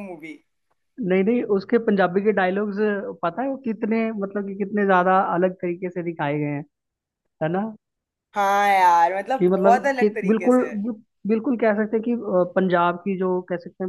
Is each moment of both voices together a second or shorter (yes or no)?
no